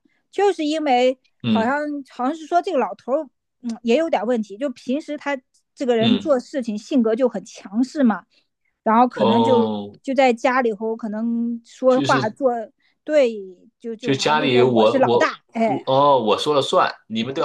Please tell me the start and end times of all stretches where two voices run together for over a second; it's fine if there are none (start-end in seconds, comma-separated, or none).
14.0-15.8